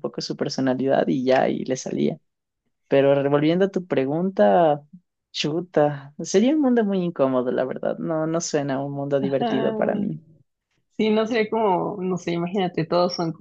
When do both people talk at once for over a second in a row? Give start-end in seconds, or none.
none